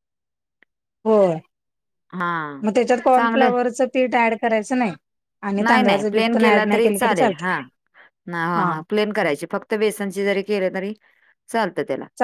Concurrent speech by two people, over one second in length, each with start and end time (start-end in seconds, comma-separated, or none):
5.6-7.5